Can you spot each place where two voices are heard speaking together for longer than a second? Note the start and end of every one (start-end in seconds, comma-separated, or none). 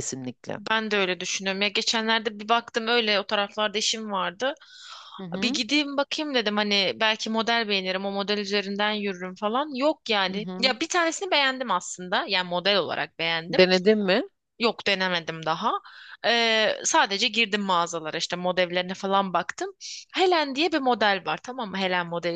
none